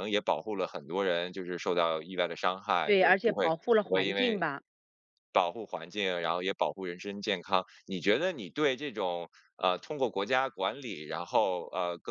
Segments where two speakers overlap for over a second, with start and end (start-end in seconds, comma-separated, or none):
2.8-4.4